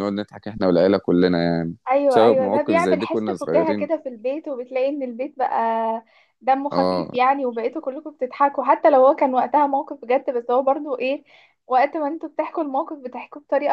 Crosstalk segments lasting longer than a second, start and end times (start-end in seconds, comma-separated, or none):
1.9-3.9